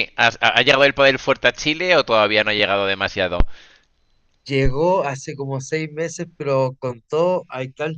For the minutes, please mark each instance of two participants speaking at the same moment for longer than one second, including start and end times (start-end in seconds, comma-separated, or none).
none